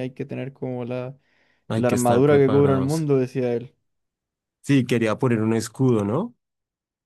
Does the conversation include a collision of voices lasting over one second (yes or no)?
yes